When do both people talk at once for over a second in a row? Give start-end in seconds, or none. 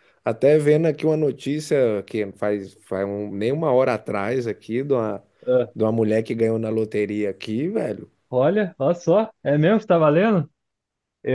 none